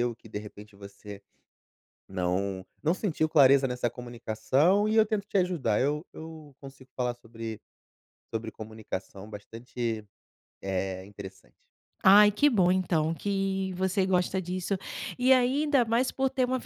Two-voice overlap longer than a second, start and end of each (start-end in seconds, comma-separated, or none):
none